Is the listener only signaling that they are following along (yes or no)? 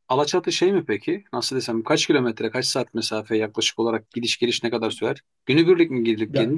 yes